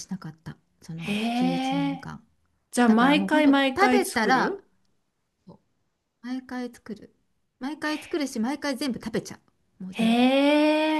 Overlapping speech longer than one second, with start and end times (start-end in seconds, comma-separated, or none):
2.9-4.6